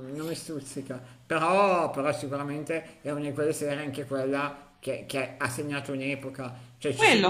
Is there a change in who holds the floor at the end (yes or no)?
no